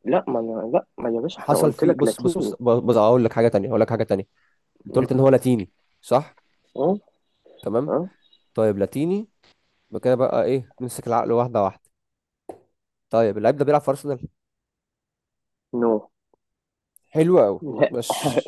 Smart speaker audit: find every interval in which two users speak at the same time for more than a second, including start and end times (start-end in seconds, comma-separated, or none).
1.4-2.6